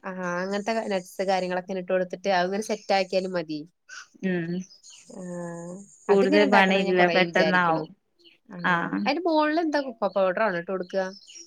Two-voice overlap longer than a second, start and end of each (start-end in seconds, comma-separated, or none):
6.1-7.8